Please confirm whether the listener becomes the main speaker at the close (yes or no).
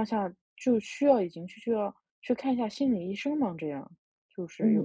yes